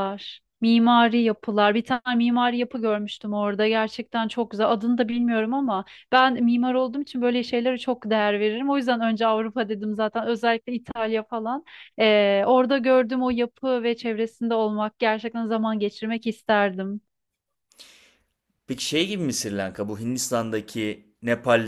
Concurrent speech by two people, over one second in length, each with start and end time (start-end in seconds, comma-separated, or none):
none